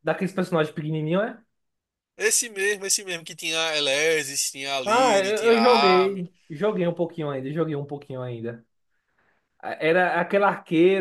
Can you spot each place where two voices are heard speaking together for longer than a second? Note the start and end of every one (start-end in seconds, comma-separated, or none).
4.9-6.2